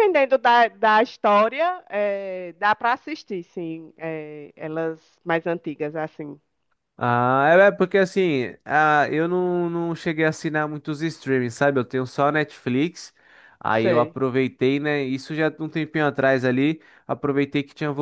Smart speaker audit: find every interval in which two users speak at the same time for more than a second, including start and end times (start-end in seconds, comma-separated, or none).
none